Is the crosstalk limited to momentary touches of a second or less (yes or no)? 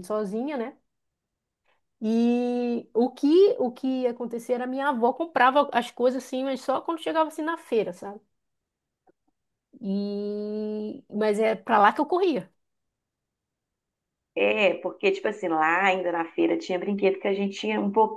yes